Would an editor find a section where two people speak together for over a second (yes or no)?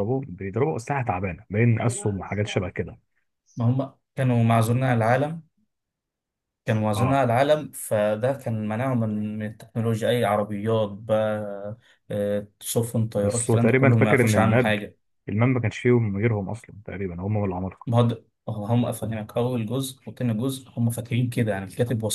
yes